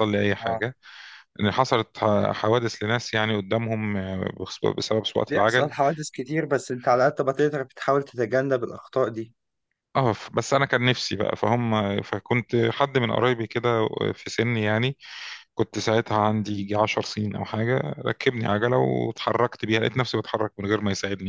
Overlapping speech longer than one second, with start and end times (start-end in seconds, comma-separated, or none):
none